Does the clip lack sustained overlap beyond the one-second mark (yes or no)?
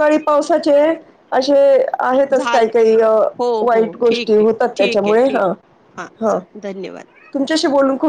no